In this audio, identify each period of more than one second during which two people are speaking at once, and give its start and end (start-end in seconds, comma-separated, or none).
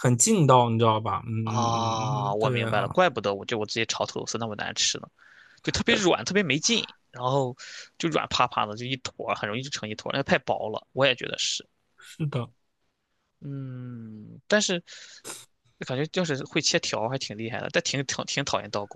1.4-2.9